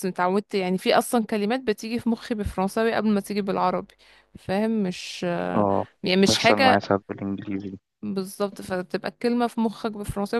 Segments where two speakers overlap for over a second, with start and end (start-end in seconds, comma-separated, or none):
none